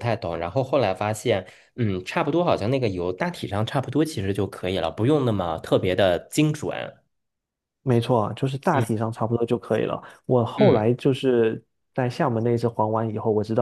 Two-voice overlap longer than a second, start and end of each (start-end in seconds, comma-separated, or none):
none